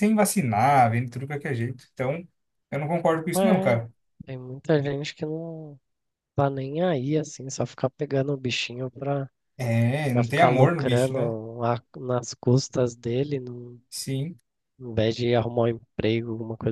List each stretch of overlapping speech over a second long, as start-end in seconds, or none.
10.1-11.3